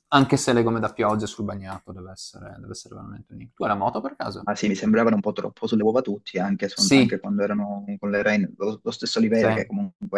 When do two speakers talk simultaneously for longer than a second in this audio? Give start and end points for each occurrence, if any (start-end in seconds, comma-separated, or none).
none